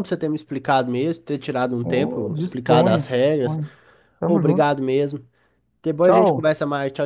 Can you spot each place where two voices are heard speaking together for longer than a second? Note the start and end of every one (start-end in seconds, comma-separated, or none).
1.8-3.6